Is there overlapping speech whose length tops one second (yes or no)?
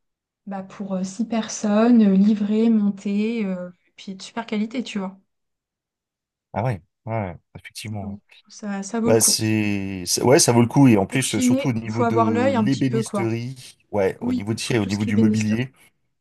yes